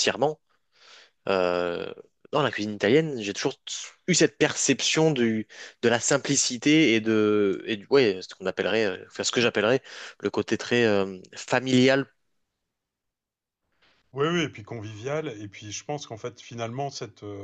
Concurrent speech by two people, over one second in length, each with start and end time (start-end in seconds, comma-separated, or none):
none